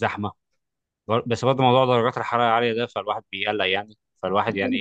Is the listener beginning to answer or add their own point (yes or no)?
yes